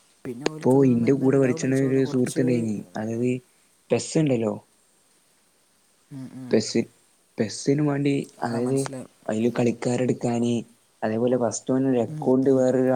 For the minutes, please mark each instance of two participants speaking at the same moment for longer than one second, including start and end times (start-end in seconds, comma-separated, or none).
0.5-2.5